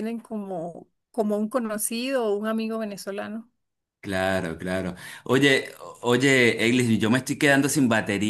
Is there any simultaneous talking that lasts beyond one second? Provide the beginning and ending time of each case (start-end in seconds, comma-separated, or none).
none